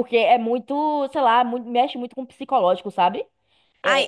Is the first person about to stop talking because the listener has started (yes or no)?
yes